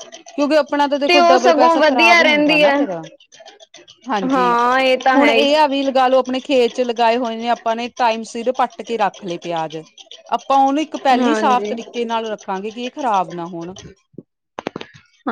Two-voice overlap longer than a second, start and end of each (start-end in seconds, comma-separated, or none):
1.1-2.7